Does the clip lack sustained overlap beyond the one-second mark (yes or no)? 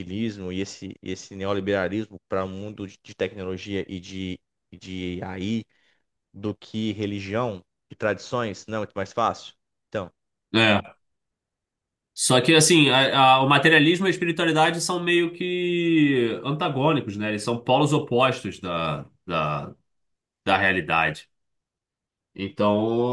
yes